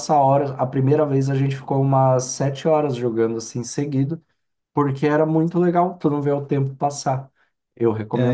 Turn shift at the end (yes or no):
yes